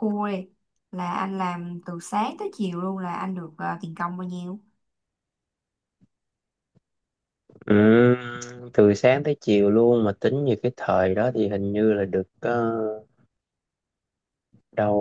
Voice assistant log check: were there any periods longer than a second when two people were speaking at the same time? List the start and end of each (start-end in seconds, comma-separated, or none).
none